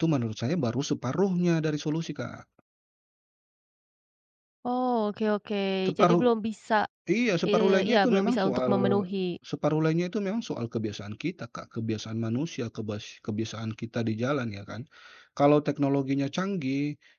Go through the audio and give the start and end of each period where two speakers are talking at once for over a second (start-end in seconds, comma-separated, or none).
7.5-9.0